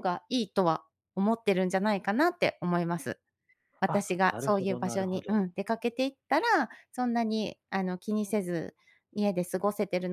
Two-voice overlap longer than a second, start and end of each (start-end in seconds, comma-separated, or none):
3.9-5.4